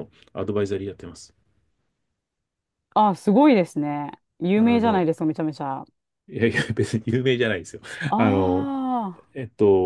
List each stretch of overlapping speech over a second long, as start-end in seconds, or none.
none